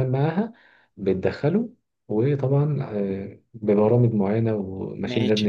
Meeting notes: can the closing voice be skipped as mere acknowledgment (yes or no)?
yes